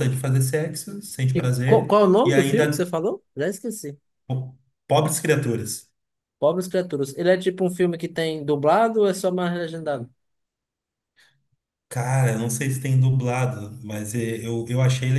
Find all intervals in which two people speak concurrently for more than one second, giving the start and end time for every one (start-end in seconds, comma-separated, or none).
1.3-2.9